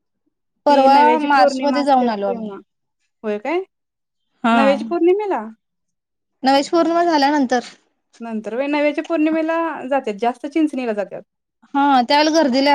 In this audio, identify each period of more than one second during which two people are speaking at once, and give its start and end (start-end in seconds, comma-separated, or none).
0.7-2.5